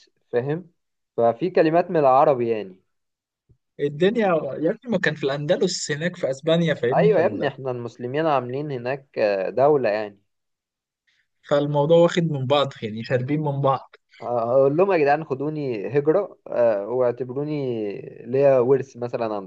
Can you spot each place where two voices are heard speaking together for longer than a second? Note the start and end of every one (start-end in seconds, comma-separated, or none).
none